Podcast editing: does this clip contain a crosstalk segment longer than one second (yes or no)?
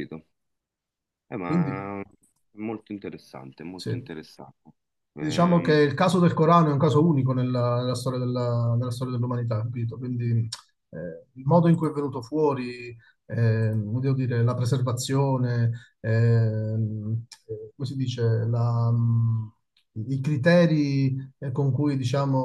no